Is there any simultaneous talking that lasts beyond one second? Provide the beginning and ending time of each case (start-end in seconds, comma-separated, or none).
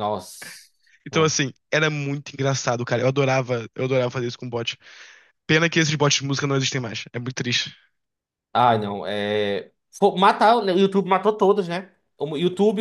none